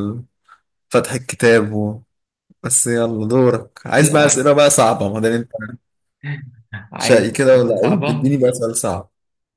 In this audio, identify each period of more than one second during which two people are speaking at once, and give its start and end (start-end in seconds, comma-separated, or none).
7.0-8.3